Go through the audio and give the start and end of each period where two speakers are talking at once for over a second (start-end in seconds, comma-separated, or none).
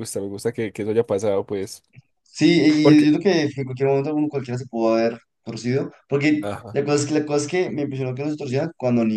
none